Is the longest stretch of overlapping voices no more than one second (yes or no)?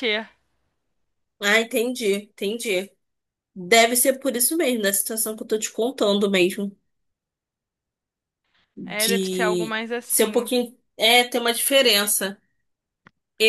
no